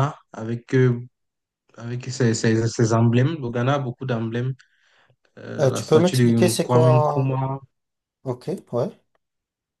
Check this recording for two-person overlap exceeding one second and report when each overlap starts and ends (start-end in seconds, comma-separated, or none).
5.6-7.3